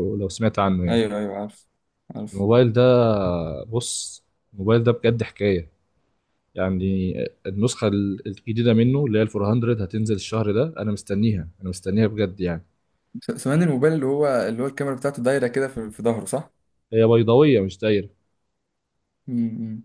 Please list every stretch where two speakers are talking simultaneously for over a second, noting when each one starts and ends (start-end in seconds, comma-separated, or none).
none